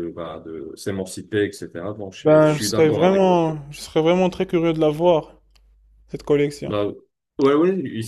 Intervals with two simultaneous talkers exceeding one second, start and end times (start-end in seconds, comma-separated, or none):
2.2-3.5